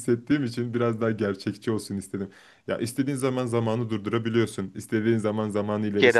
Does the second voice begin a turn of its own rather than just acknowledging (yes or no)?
no